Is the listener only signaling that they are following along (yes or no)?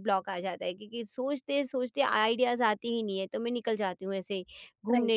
yes